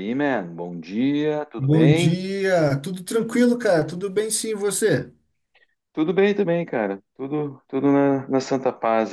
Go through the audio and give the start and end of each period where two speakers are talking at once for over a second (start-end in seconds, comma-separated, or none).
none